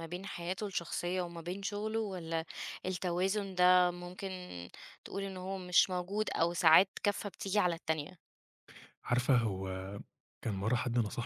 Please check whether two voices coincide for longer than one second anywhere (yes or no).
no